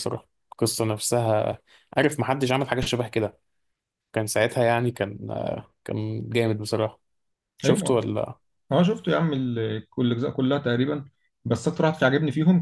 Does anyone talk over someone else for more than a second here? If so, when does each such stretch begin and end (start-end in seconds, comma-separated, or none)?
none